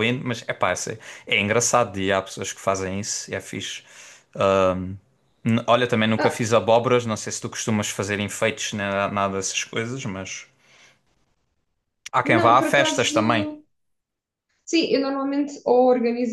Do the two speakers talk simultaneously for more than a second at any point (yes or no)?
yes